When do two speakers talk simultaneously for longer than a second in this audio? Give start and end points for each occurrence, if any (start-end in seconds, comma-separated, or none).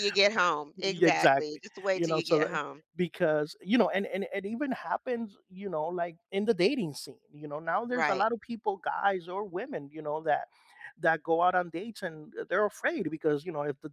0.8-2.6